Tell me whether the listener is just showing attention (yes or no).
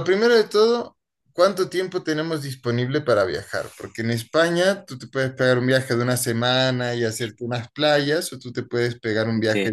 yes